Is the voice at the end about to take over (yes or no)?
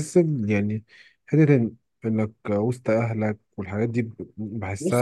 yes